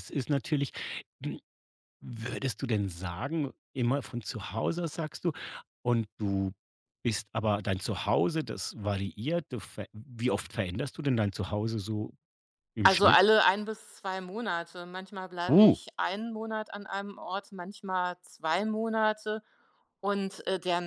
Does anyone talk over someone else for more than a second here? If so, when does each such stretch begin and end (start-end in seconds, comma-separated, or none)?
none